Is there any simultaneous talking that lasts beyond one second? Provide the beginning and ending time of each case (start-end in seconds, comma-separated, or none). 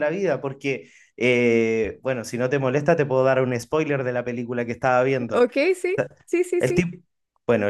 none